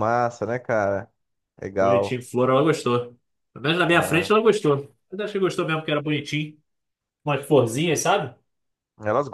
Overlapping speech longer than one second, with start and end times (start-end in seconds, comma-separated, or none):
none